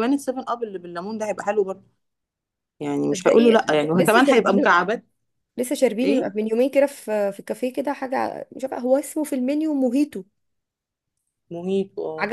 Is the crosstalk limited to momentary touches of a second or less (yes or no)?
no